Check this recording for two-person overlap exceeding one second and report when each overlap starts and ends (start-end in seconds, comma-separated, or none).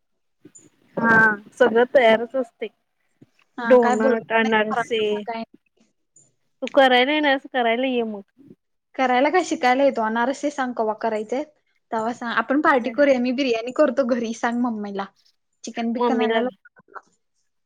3.7-5.0